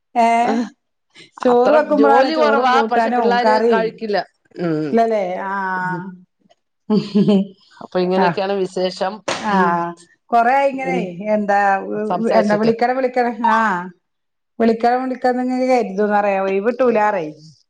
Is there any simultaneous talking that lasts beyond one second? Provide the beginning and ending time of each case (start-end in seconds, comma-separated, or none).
1.5-3.9